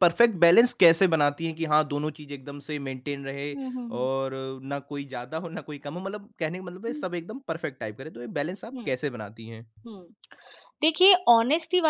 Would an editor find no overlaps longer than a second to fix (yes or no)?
yes